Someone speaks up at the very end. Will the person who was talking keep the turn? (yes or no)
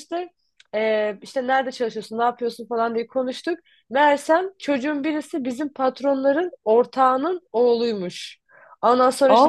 yes